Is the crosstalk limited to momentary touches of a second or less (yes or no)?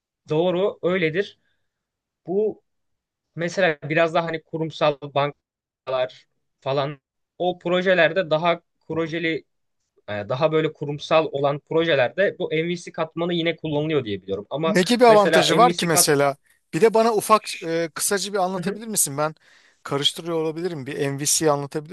no